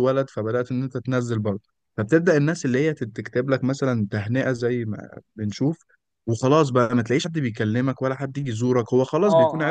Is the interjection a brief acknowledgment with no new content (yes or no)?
no